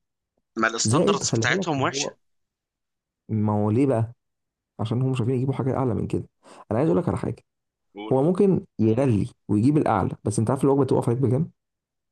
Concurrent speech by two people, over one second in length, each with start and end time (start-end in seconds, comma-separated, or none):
0.8-2.1